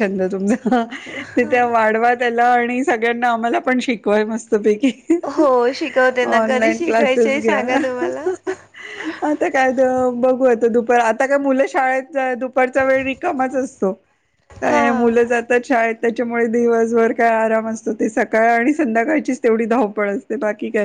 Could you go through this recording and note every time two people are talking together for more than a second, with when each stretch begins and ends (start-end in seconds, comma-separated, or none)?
6.4-7.6